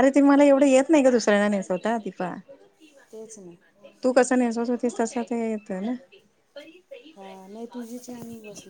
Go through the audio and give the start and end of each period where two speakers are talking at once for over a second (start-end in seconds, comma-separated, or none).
none